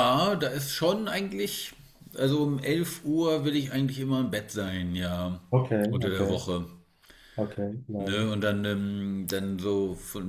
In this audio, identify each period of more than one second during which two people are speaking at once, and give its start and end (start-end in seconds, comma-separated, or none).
none